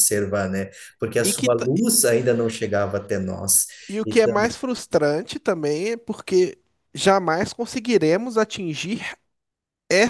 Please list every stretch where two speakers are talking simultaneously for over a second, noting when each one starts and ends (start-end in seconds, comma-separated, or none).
none